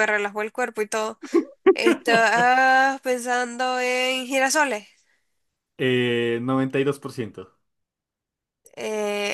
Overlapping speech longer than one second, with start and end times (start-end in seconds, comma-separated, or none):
none